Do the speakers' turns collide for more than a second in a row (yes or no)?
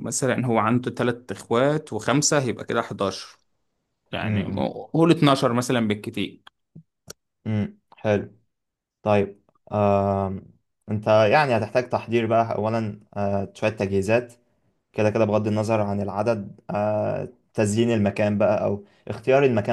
no